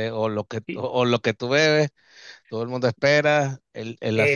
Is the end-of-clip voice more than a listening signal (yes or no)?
yes